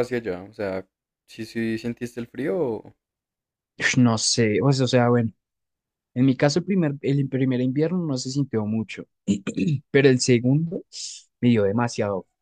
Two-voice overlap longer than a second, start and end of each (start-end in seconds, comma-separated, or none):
none